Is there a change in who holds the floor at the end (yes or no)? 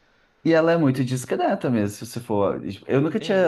yes